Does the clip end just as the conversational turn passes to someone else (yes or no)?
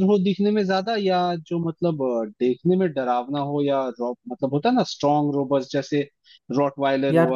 no